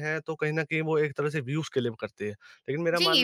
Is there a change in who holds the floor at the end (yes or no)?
yes